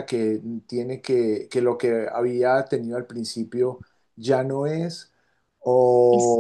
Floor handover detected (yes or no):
no